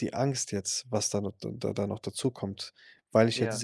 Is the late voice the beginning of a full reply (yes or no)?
no